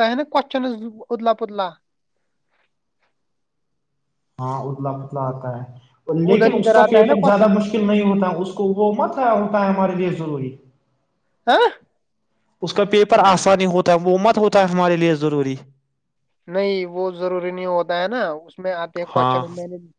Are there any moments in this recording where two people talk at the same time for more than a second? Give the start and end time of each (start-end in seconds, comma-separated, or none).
6.1-7.6